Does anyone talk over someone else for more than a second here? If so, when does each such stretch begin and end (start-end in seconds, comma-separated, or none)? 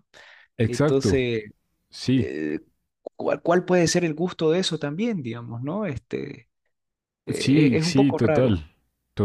7.3-8.6